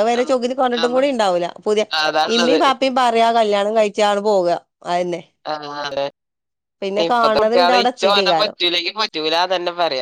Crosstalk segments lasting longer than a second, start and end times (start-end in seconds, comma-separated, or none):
7.0-8.5